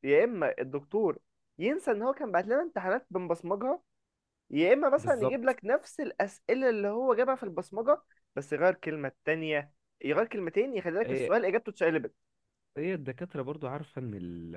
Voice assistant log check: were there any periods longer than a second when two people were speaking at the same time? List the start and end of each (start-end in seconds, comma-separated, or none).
none